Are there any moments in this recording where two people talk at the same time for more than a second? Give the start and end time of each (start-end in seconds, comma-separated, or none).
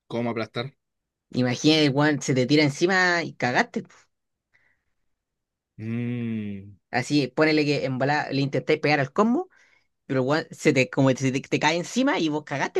none